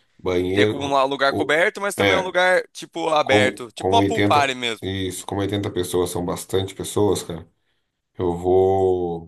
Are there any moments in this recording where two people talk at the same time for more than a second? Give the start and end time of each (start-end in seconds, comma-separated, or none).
0.5-2.3, 3.2-4.8